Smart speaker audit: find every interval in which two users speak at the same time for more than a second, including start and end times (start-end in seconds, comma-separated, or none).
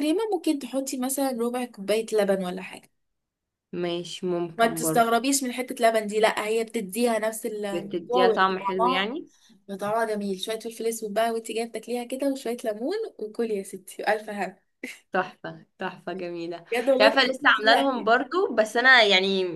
7.7-9.2, 16.7-18.1